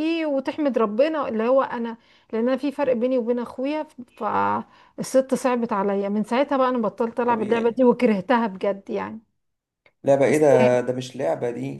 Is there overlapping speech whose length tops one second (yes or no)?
no